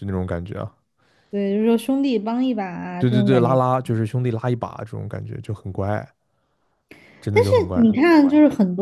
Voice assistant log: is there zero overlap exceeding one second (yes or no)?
yes